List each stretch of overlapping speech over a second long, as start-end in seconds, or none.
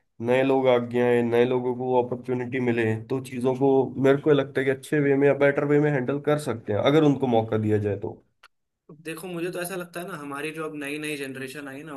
none